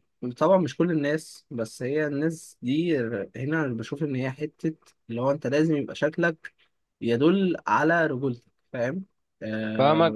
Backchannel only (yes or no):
no